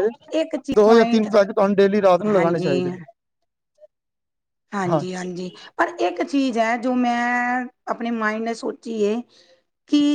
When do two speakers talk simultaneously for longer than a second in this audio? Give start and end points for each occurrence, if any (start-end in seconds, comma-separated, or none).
none